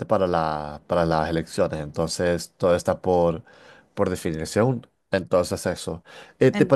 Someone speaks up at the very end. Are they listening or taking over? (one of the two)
listening